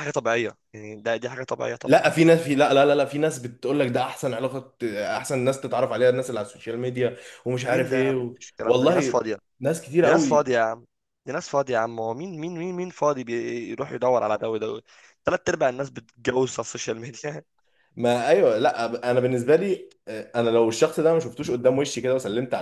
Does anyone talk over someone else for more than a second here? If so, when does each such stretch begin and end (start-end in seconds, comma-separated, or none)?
7.6-9.2